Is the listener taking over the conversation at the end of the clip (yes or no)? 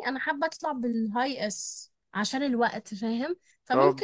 no